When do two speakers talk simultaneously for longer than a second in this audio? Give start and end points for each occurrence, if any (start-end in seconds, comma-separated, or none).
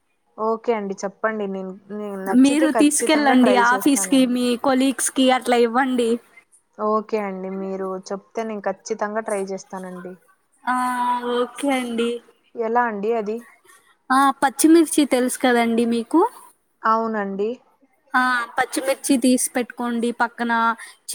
2.4-4.3